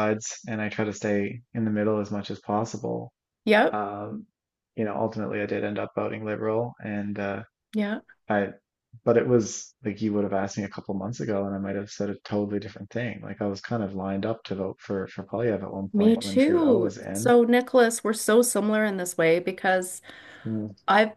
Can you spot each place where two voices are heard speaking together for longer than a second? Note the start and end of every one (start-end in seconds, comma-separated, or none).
15.9-17.3